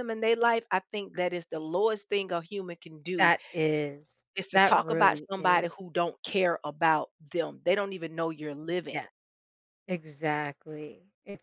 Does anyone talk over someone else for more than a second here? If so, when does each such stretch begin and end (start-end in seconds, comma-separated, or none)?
4.4-5.8